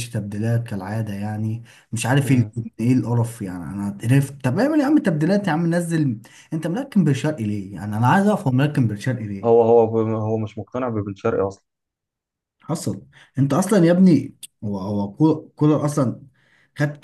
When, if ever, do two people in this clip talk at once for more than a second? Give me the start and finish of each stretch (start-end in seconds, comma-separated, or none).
none